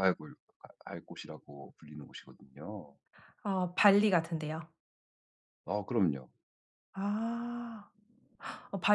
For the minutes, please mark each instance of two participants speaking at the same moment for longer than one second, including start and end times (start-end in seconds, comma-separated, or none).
none